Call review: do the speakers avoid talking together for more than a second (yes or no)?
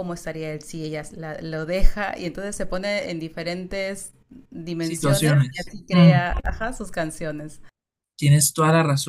no